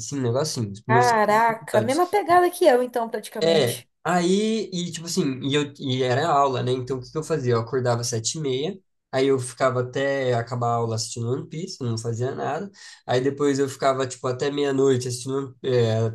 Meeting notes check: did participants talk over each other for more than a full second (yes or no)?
yes